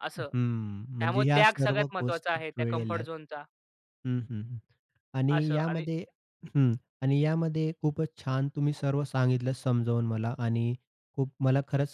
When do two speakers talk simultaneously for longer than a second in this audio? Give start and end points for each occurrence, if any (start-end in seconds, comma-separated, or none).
1.0-3.1